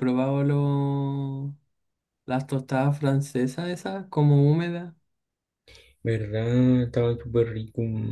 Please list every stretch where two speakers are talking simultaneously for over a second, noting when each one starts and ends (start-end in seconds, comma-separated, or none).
none